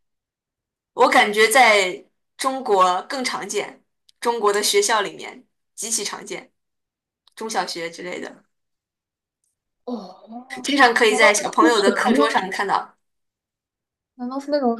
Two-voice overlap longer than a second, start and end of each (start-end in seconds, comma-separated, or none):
11.1-12.4